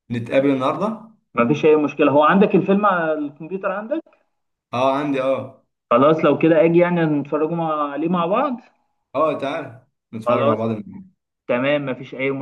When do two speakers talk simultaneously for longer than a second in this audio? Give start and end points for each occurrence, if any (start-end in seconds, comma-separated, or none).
none